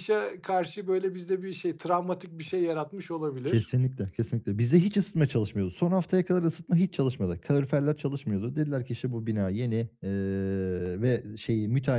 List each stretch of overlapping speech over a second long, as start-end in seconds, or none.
none